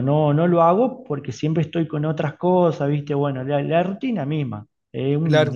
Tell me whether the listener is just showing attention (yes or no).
no